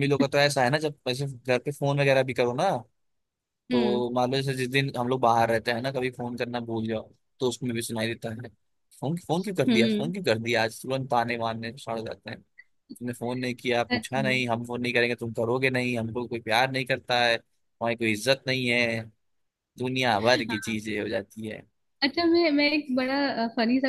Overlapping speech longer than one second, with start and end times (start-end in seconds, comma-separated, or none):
none